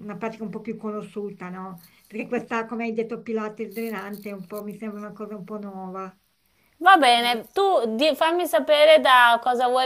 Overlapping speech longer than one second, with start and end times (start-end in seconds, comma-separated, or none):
none